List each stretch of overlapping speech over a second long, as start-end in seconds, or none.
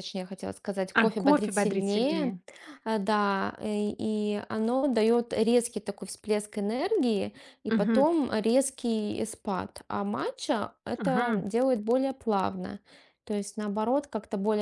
1.0-2.3